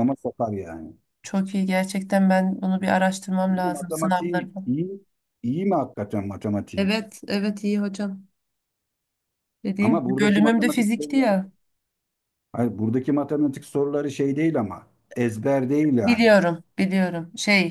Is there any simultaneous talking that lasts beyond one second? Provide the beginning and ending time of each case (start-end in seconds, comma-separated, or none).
3.5-4.7, 9.8-11.4